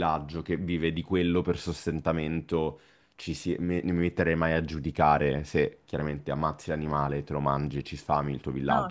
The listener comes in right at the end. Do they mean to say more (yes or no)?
no